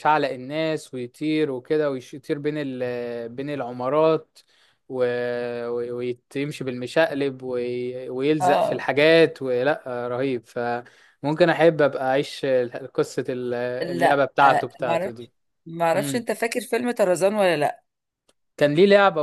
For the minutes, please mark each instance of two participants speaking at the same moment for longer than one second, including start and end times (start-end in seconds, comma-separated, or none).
13.8-15.3